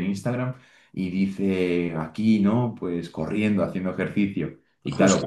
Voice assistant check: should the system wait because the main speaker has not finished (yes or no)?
yes